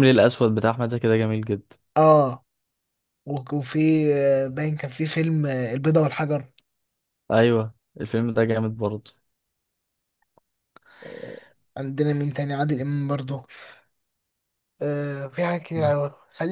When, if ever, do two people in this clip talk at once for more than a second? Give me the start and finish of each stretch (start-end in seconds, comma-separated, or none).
none